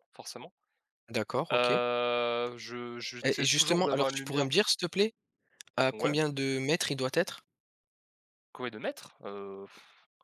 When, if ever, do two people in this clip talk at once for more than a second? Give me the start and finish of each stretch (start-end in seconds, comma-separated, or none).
3.2-4.5